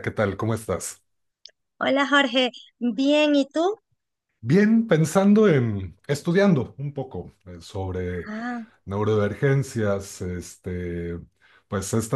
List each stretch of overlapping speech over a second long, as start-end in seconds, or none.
none